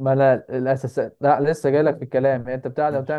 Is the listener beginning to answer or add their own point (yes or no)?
no